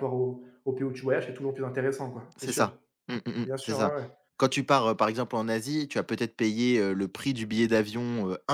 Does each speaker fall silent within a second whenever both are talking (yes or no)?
yes